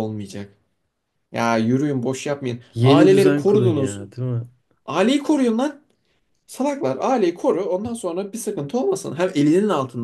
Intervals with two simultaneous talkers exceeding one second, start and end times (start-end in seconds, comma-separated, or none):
2.7-4.0